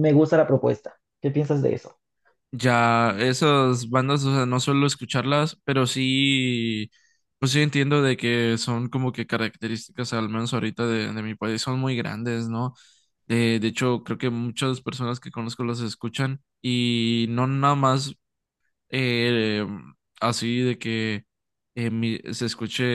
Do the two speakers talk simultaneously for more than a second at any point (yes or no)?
no